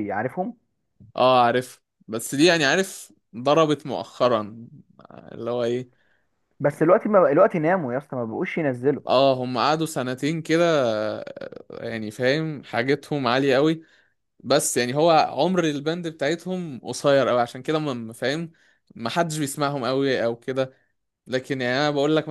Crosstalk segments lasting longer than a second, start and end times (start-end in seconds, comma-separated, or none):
none